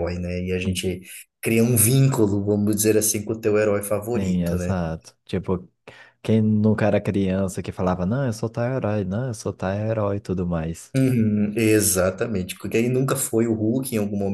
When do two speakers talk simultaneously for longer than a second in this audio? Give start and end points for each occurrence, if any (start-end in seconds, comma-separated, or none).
none